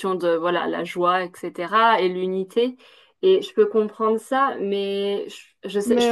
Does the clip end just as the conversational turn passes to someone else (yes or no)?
yes